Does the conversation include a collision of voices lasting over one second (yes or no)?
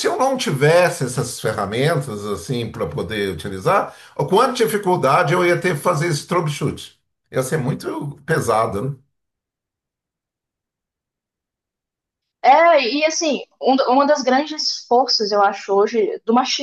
no